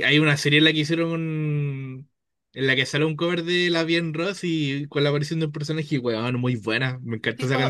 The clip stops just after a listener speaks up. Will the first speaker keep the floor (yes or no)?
no